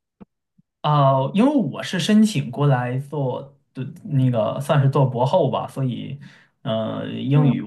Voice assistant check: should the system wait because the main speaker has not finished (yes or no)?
yes